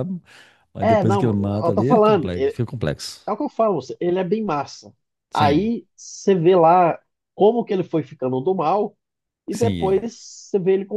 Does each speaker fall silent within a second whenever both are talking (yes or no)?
no